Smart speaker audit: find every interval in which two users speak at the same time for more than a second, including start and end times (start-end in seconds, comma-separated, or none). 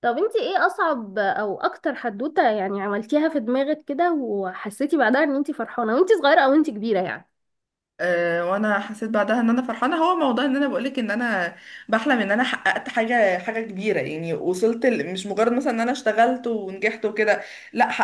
none